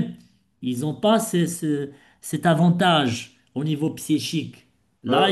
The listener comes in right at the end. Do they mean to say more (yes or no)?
yes